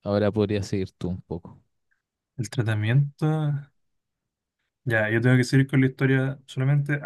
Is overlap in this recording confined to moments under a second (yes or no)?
yes